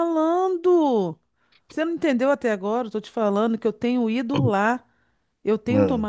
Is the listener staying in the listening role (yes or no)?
yes